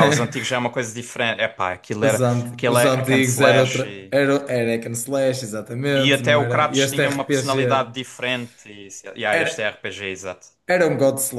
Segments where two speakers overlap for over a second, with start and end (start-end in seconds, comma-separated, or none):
2.0-4.1, 6.0-7.6